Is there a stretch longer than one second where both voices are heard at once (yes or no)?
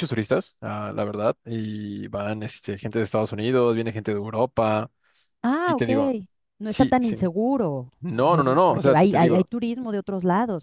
yes